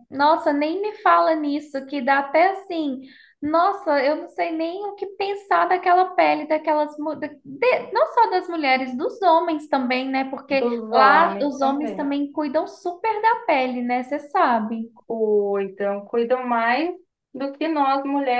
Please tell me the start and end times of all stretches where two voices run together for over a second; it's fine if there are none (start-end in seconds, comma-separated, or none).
10.6-12.0